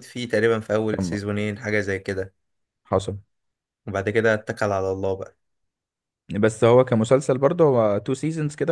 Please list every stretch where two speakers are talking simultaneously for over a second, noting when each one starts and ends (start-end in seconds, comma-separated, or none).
none